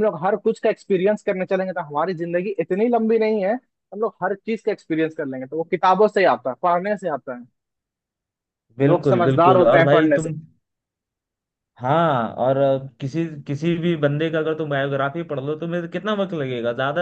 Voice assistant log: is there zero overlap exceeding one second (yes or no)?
no